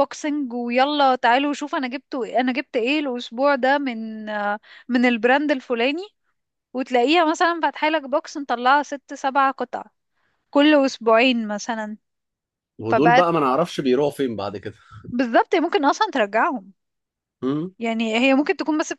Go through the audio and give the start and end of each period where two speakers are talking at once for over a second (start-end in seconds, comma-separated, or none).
none